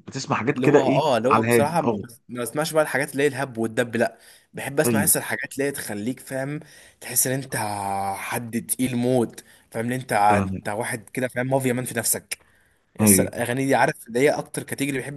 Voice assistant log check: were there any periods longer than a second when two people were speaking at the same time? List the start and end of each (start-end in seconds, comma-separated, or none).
0.5-2.0